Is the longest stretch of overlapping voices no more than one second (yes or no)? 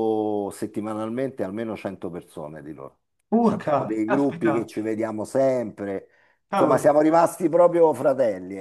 no